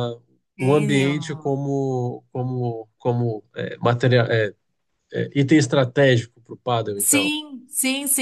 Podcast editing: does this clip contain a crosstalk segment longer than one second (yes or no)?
no